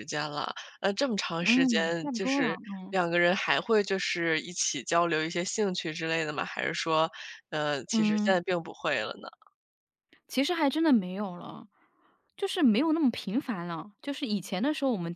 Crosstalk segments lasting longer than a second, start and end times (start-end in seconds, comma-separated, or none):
1.4-3.0